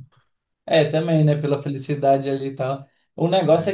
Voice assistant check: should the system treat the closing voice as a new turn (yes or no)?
no